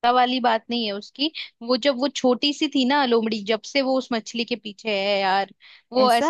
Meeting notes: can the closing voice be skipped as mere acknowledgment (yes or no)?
yes